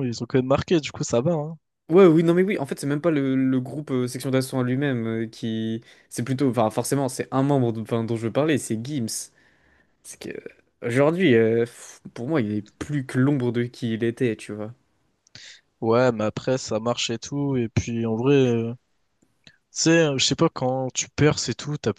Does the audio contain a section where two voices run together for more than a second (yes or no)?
no